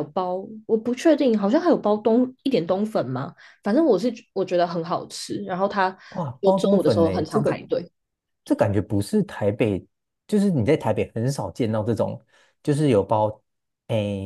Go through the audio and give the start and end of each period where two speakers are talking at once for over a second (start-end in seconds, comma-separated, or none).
6.4-7.6